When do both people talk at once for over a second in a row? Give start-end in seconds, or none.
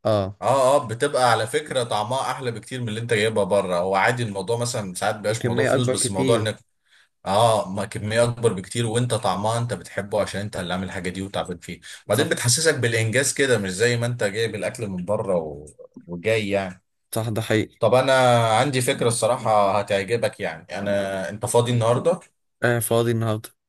5.3-6.5